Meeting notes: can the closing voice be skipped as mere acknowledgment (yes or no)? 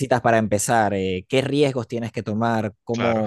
yes